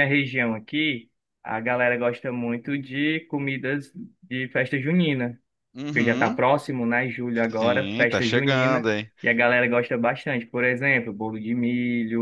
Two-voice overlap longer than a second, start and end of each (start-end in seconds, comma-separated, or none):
7.6-8.8